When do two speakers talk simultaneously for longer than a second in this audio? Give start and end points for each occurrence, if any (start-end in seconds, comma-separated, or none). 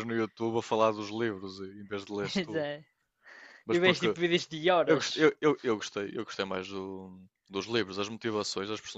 none